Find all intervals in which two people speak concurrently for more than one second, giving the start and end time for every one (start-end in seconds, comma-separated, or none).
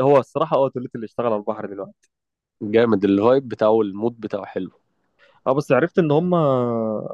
none